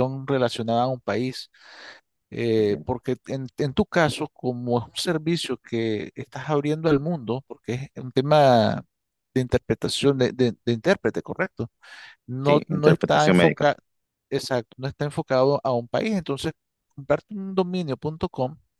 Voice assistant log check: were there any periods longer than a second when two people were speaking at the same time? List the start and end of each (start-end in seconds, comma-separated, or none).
12.4-13.7